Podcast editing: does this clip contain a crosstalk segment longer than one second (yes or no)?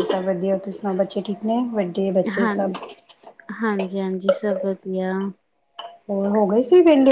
no